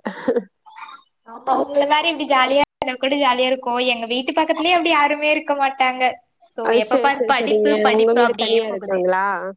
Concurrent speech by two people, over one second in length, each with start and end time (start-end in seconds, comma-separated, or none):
6.7-9.0